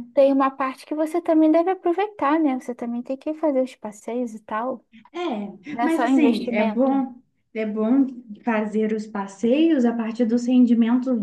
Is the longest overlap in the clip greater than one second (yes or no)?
yes